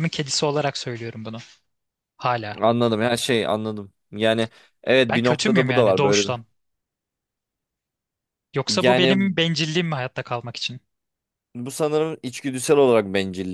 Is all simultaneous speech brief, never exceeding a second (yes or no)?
no